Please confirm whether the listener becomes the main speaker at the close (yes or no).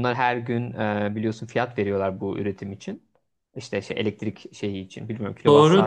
no